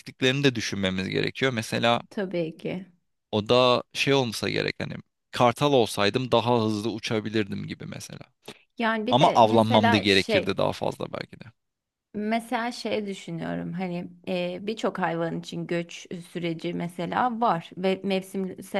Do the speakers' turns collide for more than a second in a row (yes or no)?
yes